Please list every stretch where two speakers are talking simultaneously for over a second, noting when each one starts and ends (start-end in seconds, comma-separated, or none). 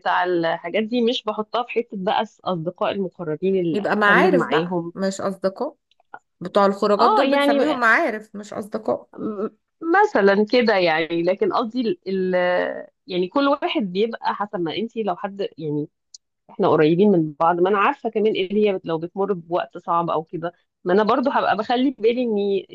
3.7-4.9